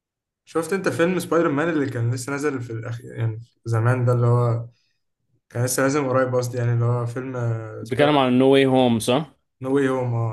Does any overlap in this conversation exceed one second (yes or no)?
no